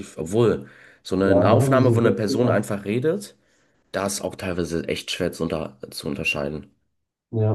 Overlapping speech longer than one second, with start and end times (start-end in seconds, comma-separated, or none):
1.2-2.6